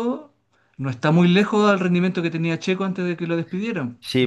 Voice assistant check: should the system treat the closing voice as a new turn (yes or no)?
yes